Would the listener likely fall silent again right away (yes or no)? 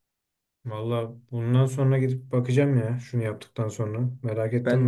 no